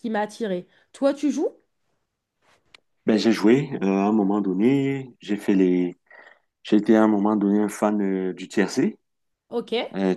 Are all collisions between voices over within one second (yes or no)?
yes